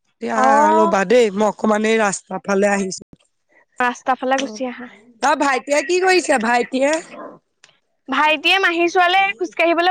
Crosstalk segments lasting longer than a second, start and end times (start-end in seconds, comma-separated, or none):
none